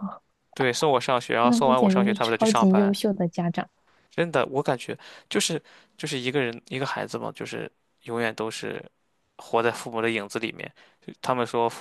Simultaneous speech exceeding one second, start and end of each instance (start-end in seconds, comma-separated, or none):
1.4-3.0